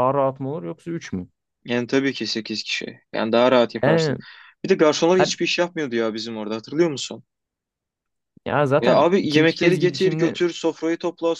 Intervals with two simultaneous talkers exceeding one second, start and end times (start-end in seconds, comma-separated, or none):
8.8-10.4